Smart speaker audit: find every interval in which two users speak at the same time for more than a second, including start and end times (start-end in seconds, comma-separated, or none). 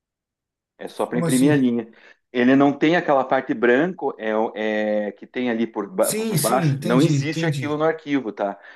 6.0-7.8